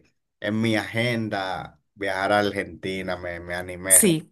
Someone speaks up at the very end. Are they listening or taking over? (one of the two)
taking over